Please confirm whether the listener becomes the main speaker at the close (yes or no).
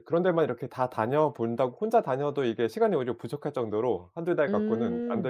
yes